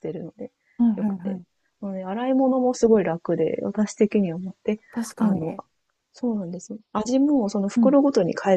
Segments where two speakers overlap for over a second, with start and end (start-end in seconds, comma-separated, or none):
none